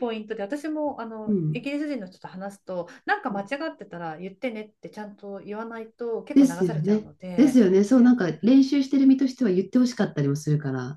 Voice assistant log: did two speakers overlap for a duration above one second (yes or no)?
yes